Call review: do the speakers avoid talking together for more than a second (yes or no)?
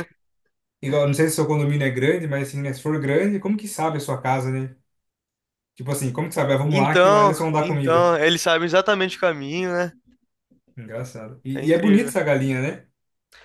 no